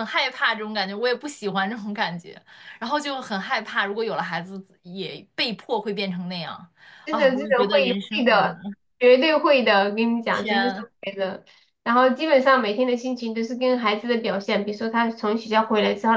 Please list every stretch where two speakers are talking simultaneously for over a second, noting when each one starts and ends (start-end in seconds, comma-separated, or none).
7.1-8.6